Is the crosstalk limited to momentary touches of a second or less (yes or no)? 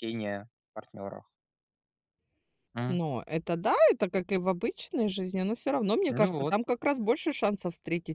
yes